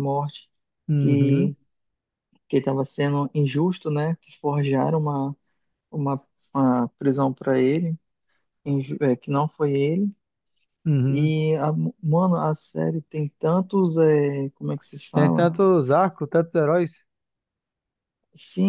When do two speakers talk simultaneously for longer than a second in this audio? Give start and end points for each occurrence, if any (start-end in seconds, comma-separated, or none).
none